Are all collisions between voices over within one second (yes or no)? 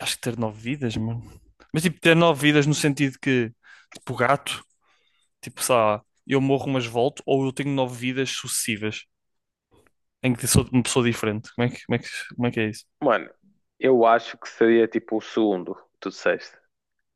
yes